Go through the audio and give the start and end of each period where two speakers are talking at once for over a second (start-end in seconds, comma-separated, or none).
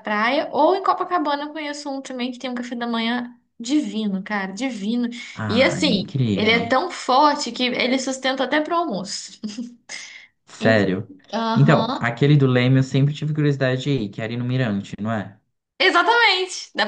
5.5-6.8